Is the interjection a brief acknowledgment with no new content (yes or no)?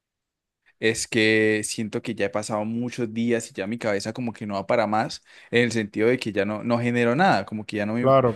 yes